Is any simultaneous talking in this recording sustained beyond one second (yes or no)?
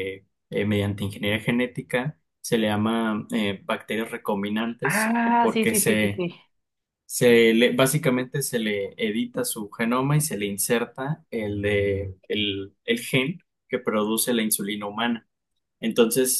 yes